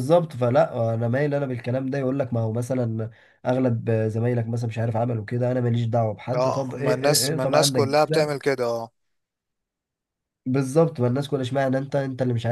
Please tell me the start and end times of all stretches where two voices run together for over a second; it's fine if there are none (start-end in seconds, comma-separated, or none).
6.3-7.9